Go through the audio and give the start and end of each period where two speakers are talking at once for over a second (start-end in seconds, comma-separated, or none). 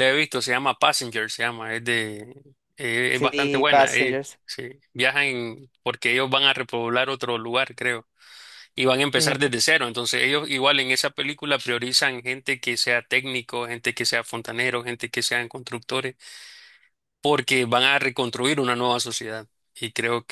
3.1-4.4